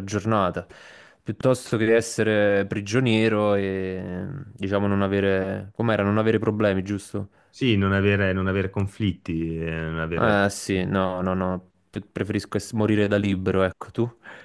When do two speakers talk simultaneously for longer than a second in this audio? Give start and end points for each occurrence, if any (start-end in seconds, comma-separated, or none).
none